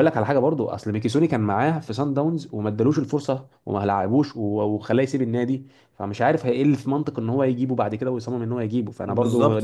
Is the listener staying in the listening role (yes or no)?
no